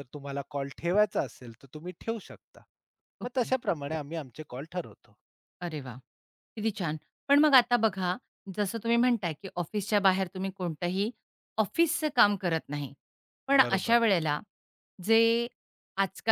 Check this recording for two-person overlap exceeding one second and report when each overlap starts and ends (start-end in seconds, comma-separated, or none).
none